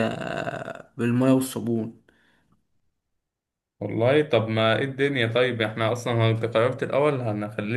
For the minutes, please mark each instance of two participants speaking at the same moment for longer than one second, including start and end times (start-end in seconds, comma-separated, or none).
none